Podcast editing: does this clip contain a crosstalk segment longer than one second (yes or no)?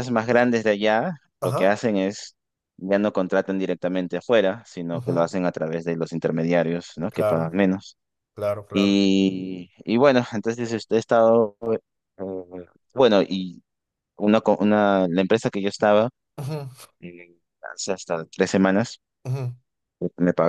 no